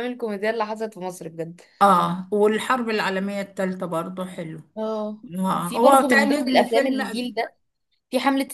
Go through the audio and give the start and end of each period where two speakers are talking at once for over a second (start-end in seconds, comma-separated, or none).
5.6-7.0